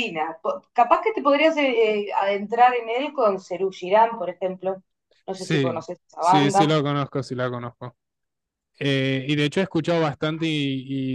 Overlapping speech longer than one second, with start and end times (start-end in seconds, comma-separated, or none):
5.3-6.8